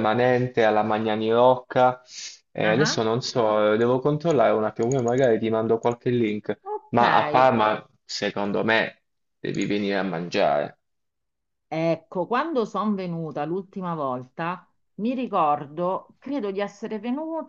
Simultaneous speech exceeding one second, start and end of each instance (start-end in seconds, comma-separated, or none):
none